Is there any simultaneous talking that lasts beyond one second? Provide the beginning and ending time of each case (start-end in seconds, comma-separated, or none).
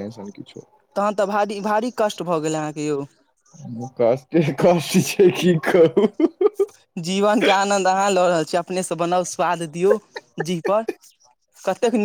none